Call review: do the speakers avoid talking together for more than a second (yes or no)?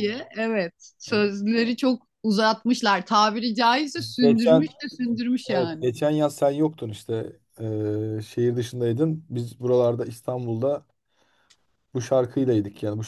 yes